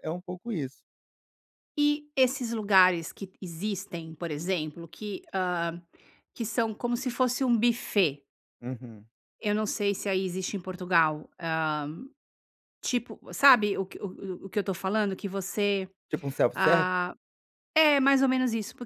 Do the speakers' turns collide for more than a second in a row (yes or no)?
no